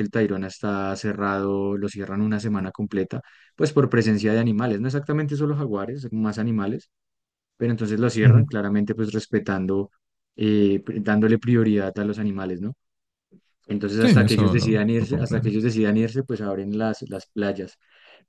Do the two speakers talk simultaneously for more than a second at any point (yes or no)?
yes